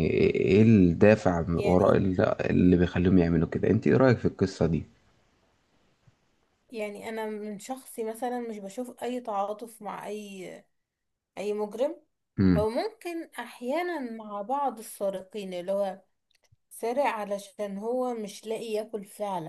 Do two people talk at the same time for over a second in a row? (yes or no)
no